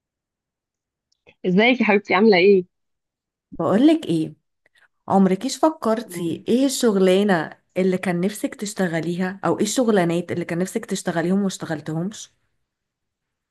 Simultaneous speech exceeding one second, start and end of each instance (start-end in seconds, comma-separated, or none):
none